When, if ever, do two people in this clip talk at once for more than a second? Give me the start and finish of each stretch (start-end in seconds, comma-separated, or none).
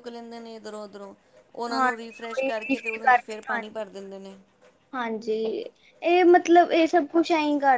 1.7-3.8